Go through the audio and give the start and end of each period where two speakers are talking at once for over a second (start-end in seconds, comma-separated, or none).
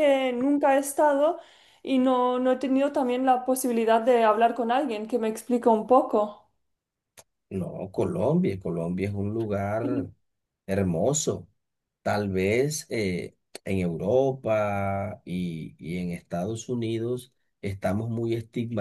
none